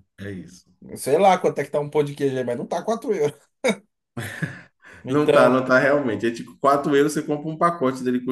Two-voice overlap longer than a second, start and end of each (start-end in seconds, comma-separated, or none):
none